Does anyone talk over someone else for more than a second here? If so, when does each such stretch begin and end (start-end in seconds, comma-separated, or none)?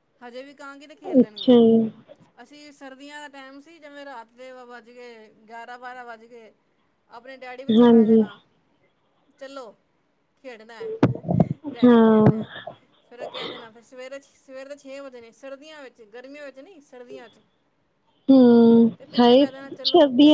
none